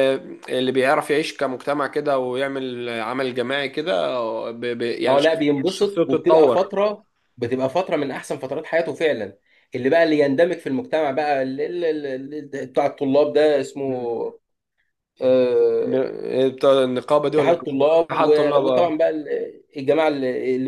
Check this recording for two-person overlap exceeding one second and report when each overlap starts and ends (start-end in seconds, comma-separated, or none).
5.1-6.7, 17.3-19.0